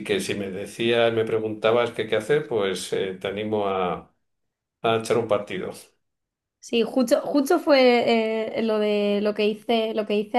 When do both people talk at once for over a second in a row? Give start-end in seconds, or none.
none